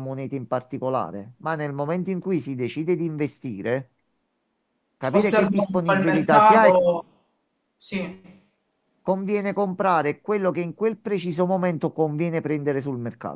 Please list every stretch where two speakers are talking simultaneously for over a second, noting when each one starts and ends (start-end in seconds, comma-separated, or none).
5.1-6.8